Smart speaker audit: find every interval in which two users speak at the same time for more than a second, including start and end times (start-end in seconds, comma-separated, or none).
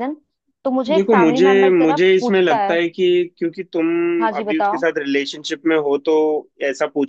0.9-2.8